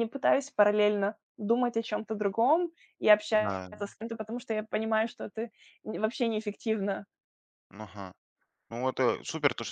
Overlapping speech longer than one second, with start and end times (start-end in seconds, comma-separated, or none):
none